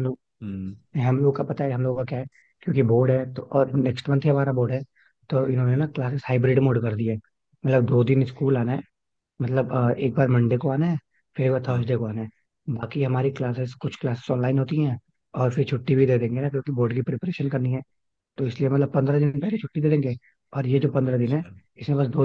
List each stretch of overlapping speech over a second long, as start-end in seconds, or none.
none